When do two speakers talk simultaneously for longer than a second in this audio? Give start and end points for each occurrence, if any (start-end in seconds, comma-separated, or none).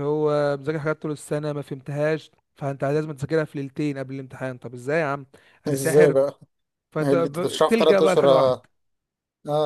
7.0-8.7